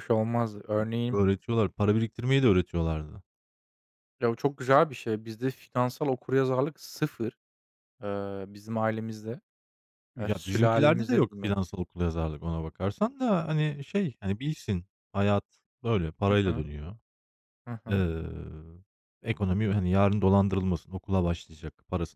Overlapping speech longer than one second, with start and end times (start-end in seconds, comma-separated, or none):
10.2-11.5